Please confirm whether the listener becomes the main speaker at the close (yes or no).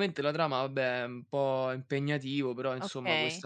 yes